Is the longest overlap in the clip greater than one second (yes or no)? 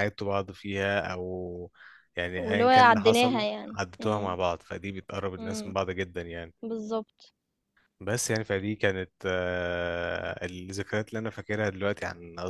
yes